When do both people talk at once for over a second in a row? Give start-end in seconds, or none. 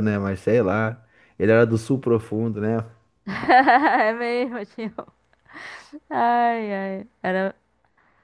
none